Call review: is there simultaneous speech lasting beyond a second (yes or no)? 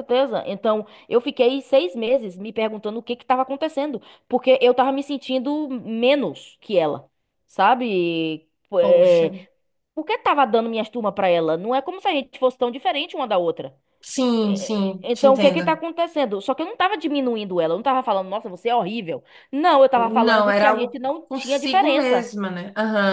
yes